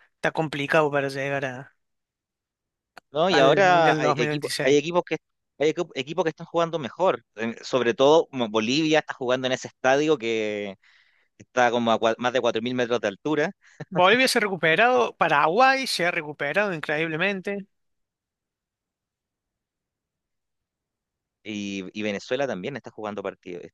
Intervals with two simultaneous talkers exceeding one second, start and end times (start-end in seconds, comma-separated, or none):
3.3-4.8